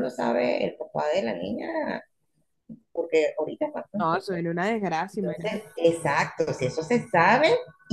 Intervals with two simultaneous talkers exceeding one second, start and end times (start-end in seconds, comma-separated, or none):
none